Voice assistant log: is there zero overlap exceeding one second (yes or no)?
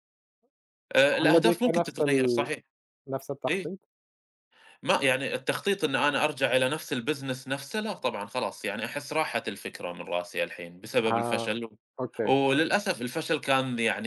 no